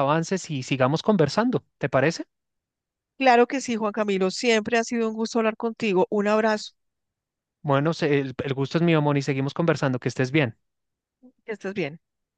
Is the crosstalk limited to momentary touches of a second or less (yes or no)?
yes